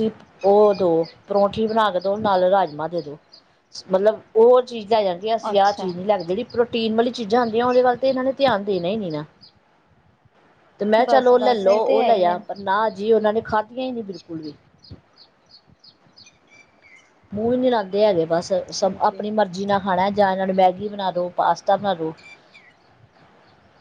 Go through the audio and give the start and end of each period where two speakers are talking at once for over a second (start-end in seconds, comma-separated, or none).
11.0-12.4